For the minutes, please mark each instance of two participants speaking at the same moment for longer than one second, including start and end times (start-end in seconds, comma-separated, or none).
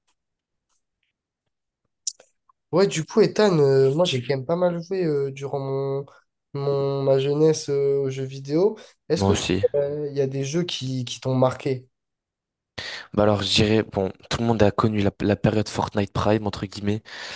none